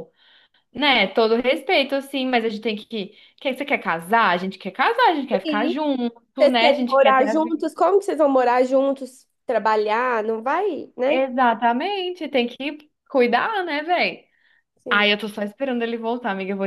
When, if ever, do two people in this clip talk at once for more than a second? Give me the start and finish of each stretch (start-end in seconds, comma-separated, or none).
6.4-7.6